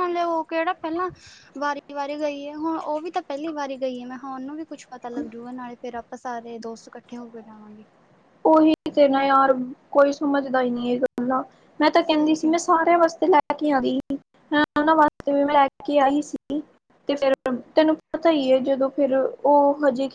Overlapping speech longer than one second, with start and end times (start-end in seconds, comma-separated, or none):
none